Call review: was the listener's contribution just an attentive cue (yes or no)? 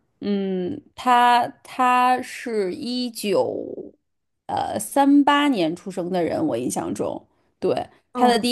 yes